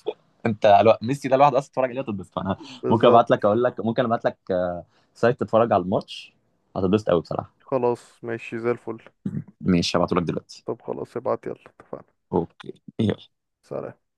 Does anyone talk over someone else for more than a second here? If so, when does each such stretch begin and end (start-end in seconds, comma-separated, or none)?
none